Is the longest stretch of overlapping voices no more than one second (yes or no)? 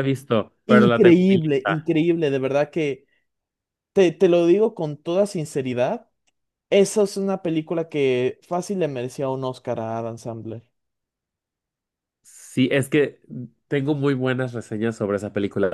no